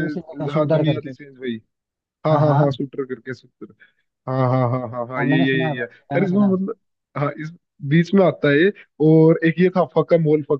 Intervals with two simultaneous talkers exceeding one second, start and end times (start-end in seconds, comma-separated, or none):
5.2-6.5